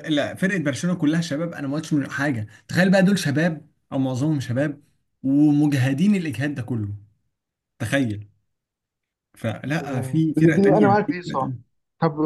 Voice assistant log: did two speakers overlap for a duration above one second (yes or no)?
yes